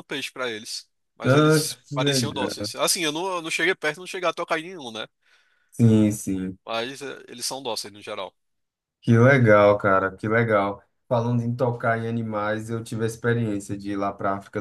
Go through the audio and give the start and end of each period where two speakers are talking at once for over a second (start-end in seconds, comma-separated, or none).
1.2-2.7